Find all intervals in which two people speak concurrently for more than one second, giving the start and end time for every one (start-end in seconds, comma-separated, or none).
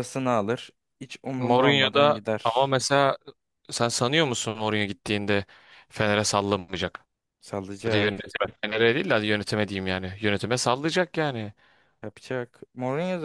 1.4-2.8